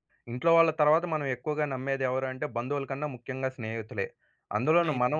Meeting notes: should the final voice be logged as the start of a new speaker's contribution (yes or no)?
no